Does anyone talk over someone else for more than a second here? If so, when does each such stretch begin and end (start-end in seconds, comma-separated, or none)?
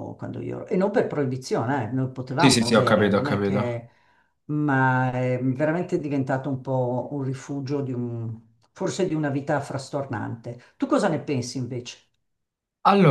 2.4-3.8